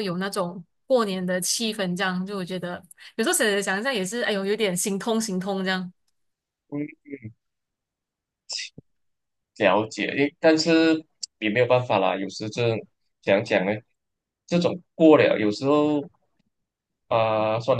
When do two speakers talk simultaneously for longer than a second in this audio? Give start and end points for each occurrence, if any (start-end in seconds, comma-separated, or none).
none